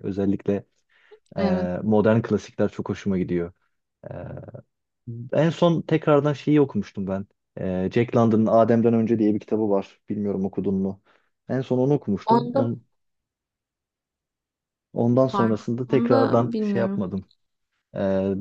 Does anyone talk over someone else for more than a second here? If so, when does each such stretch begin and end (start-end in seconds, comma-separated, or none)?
15.3-17.0